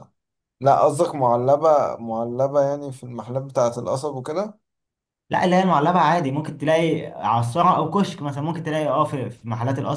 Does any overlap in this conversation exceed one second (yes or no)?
no